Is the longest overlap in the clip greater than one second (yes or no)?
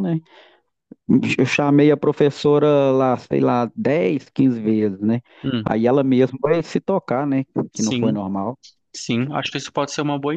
no